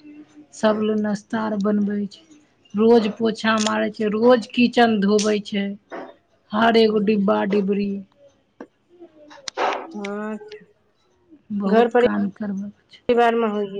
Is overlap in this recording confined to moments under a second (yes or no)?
no